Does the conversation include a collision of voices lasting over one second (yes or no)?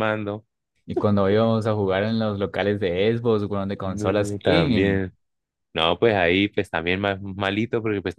yes